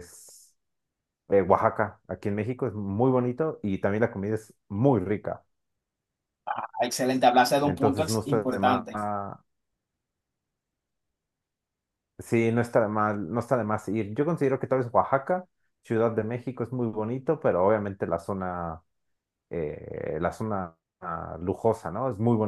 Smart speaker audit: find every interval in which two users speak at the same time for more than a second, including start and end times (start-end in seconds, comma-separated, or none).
7.6-8.9